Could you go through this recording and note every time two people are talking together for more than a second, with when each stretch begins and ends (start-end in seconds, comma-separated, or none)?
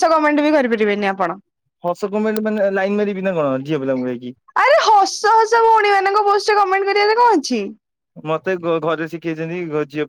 none